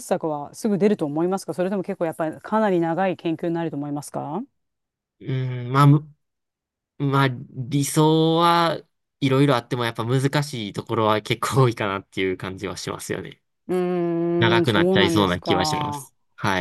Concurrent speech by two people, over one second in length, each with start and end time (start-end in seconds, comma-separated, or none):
14.4-16.1